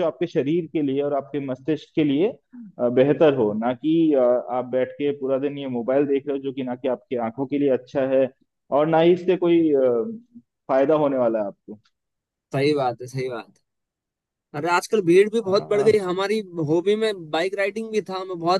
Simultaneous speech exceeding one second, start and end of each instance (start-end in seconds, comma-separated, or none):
none